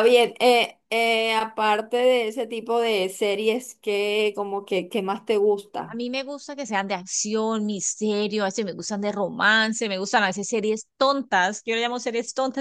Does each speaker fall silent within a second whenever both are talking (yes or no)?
yes